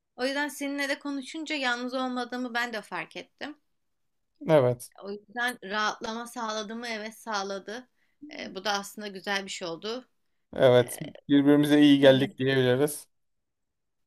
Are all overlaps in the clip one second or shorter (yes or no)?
yes